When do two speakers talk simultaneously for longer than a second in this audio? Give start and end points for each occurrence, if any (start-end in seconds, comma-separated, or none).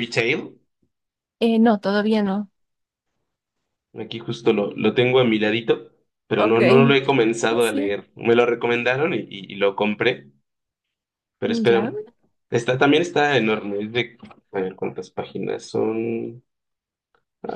none